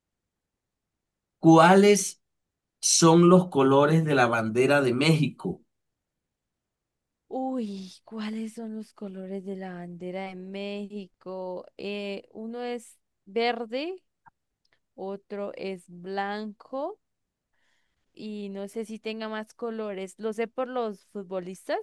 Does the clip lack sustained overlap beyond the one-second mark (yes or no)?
yes